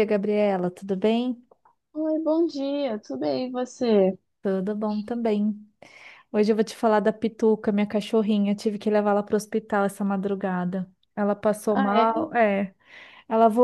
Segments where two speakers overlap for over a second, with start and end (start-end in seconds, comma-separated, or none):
none